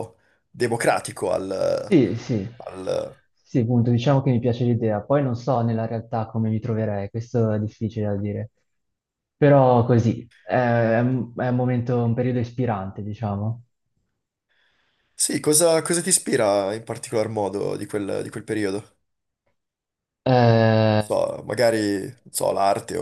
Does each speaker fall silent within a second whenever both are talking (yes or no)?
yes